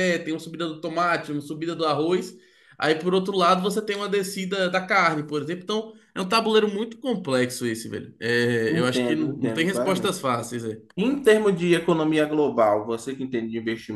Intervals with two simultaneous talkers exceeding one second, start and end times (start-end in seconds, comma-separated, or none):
8.7-10.2